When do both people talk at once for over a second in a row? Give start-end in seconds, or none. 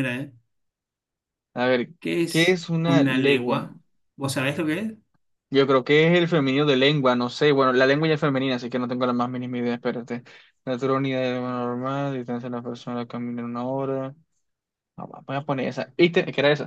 2.3-3.7